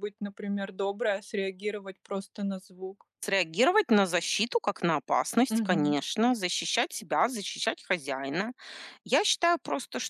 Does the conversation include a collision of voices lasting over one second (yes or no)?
no